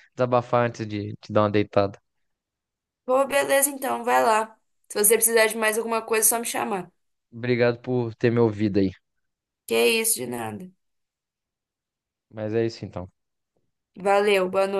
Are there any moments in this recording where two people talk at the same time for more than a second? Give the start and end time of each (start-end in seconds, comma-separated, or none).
none